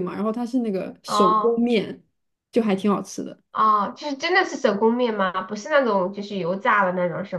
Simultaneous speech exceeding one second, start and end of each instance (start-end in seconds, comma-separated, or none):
none